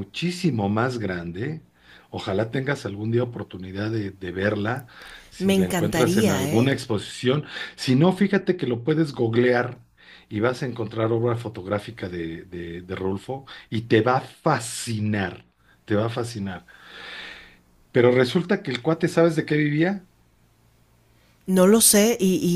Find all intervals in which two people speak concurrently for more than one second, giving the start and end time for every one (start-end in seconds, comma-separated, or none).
5.4-6.7